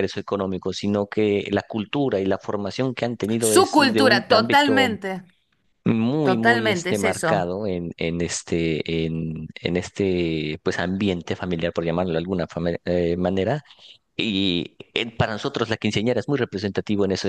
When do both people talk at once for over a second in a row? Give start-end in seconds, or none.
3.4-5.0, 6.2-7.5